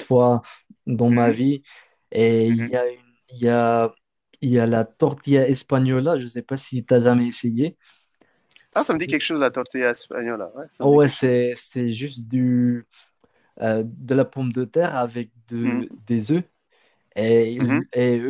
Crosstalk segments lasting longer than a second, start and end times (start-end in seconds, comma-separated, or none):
none